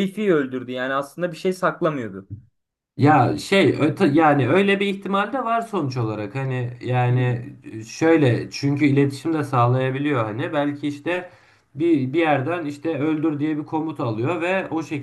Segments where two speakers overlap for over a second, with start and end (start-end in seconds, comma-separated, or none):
none